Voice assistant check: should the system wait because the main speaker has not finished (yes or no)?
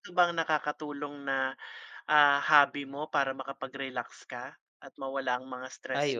no